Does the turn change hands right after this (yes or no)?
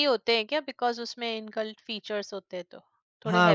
yes